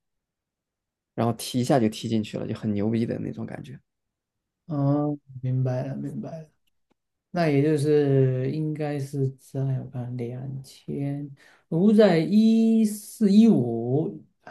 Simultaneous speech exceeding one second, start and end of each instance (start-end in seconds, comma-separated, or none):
none